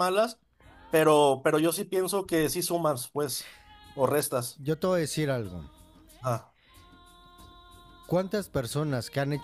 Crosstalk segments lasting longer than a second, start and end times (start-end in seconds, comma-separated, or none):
none